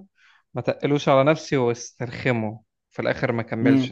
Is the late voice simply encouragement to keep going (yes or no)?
no